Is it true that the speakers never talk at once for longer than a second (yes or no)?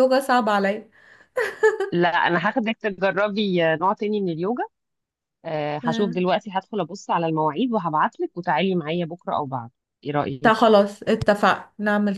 yes